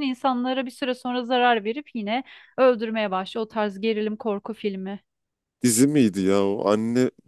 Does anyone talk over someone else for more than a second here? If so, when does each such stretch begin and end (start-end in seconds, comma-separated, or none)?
none